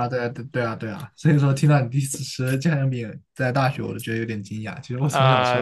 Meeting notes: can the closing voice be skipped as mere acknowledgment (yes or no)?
no